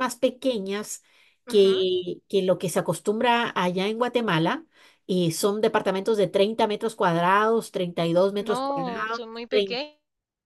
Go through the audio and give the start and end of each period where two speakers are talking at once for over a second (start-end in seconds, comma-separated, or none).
8.4-9.8